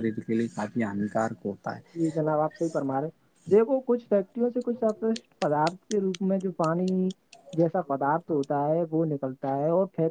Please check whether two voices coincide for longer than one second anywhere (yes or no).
no